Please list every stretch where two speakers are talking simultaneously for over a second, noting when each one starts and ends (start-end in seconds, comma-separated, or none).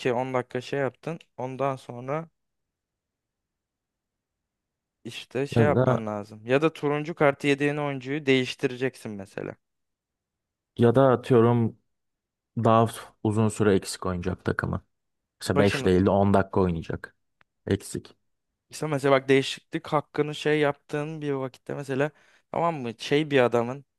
none